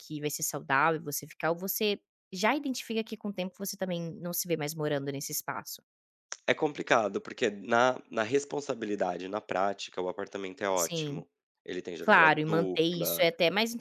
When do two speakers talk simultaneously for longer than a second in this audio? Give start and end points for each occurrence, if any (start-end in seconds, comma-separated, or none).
12.0-13.2